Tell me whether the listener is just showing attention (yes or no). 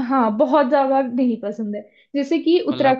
yes